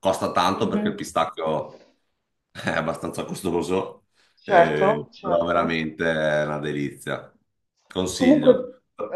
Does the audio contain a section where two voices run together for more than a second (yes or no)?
yes